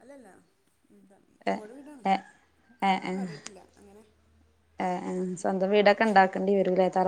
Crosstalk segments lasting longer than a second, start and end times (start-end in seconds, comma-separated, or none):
none